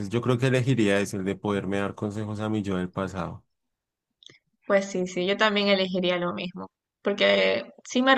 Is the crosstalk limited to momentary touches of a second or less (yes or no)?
yes